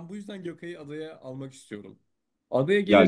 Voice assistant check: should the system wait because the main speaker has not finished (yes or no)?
yes